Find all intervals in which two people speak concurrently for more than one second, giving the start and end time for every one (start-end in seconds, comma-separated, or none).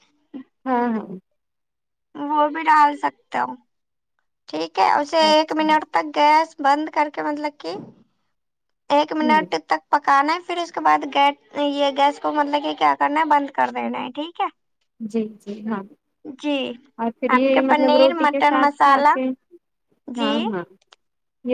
17.4-19.1